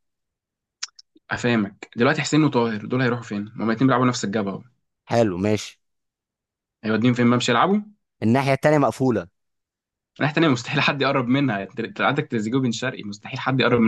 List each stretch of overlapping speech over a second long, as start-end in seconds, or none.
none